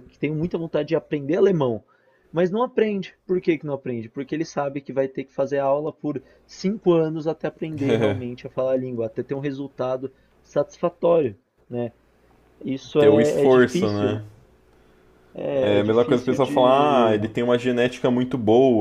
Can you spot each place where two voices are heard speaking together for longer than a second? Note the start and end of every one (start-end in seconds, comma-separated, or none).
13.0-14.2, 15.5-17.2